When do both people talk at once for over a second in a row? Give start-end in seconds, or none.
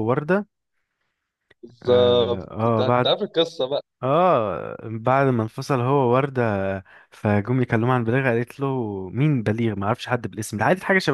1.8-3.1